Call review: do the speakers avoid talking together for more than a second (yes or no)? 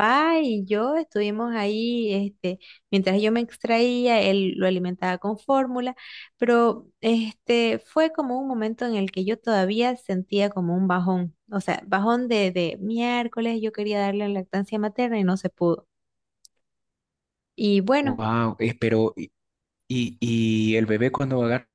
yes